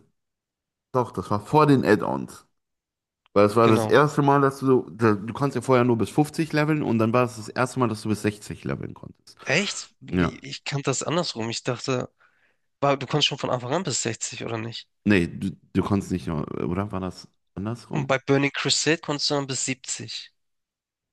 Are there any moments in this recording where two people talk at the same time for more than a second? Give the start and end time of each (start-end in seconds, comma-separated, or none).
none